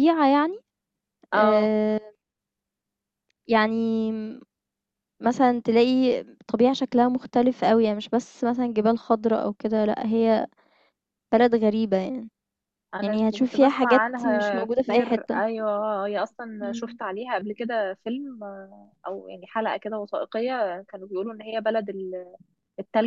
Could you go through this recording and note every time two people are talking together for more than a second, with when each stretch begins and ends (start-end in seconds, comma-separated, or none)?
13.0-15.4